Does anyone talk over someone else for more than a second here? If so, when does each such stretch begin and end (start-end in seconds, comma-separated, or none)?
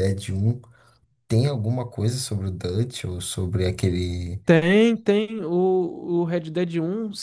none